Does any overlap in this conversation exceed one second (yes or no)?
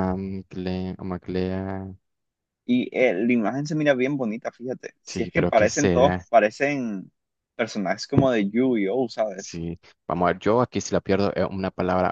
yes